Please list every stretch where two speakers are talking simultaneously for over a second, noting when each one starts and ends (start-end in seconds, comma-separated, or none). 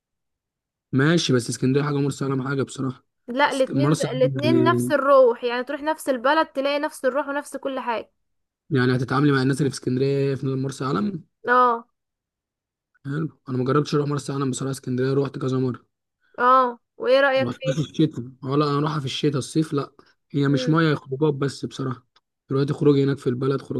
3.5-4.9